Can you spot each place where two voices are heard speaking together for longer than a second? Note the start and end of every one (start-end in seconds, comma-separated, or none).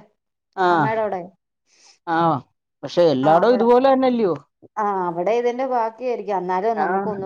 none